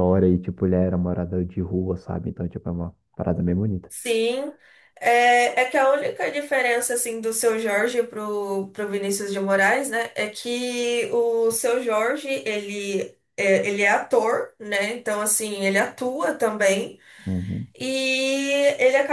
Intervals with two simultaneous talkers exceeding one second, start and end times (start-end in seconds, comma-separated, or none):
none